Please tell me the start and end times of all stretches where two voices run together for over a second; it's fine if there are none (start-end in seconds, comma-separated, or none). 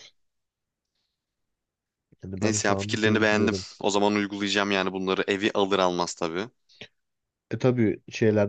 2.4-3.7